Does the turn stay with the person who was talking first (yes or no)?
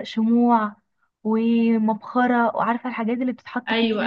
no